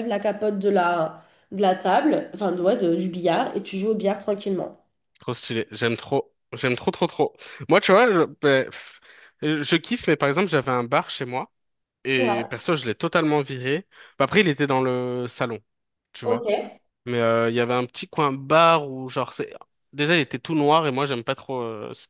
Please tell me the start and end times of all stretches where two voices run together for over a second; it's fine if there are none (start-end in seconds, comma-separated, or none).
none